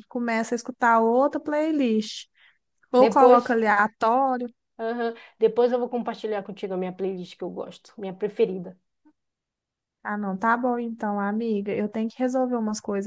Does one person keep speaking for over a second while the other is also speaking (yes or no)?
no